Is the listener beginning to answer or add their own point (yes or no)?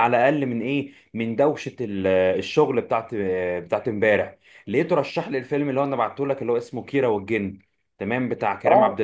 no